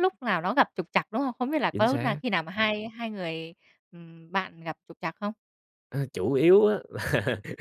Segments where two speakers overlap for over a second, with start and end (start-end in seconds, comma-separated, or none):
none